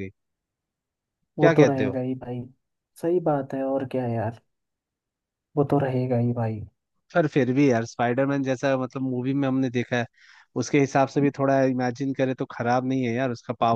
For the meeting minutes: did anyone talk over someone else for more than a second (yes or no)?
no